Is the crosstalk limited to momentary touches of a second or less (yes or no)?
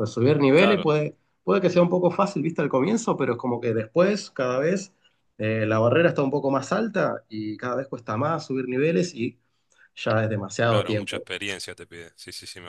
yes